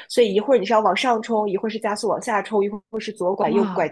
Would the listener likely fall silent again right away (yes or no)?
yes